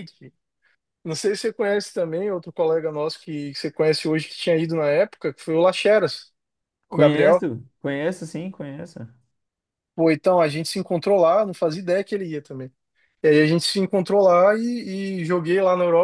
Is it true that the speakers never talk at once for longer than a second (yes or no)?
yes